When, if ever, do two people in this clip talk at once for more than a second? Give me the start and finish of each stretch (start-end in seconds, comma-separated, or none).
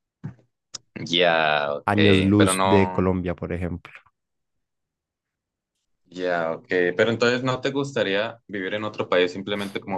1.9-3.1